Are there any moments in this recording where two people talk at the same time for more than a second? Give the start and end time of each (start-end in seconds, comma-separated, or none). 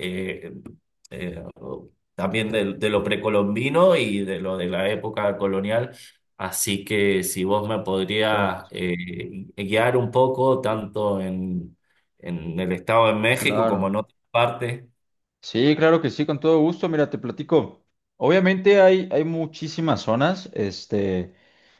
none